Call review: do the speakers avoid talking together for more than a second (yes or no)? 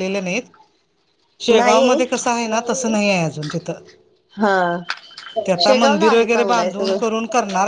no